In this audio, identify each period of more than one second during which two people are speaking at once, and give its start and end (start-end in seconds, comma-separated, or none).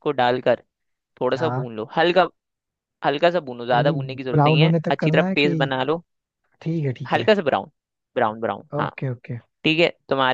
3.7-5.6